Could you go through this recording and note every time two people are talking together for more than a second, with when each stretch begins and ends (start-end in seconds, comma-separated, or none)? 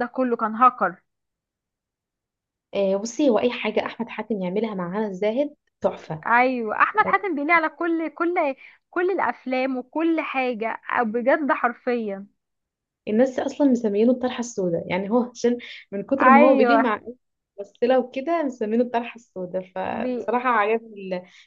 none